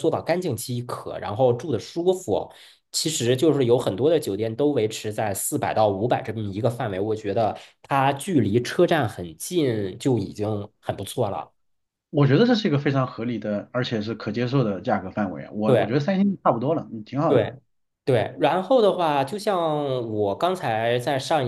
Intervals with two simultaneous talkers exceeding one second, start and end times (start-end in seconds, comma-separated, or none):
none